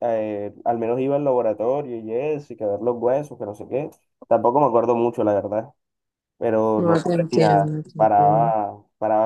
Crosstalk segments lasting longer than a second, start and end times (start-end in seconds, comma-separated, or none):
6.8-8.5